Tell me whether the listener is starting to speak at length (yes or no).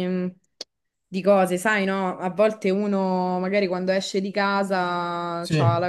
no